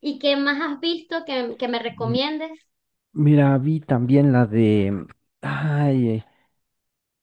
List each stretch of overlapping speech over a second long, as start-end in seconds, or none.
none